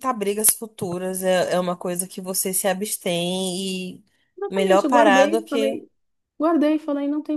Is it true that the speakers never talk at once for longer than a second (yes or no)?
no